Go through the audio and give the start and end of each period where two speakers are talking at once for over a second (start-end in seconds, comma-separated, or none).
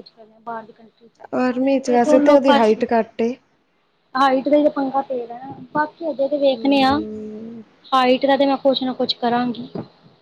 1.5-2.8